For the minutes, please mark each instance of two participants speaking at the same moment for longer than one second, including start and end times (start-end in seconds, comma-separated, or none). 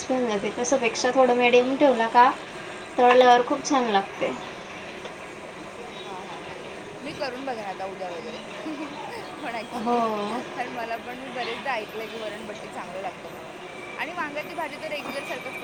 none